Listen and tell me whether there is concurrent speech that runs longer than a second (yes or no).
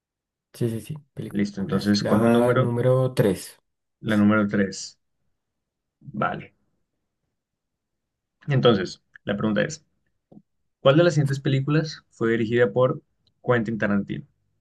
yes